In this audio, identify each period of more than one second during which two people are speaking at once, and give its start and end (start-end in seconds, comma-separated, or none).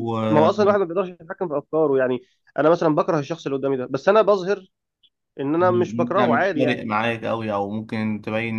5.6-6.8